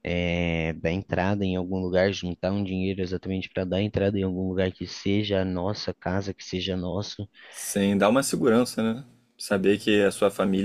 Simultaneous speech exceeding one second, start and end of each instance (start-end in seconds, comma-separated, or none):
none